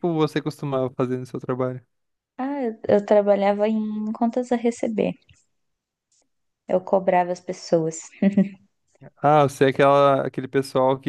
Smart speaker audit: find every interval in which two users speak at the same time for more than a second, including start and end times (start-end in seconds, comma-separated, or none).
none